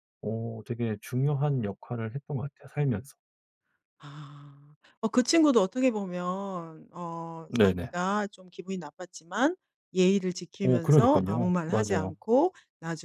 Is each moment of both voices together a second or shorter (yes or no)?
no